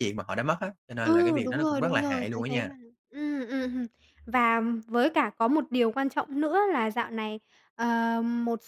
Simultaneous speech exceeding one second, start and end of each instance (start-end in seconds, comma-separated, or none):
1.0-2.7